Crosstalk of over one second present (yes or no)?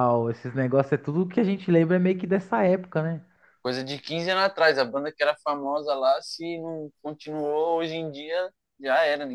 no